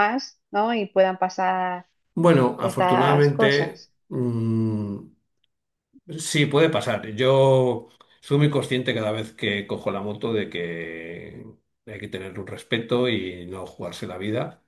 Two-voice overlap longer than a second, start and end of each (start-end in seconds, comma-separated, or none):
2.6-3.9